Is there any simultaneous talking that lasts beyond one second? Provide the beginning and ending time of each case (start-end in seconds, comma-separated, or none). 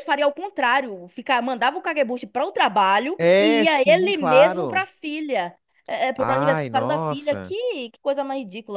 3.2-4.9, 6.2-7.5